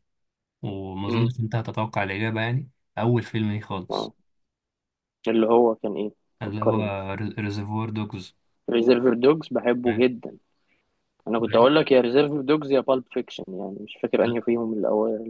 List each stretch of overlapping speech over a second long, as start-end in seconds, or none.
none